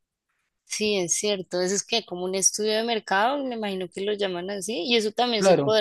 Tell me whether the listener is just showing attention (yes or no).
yes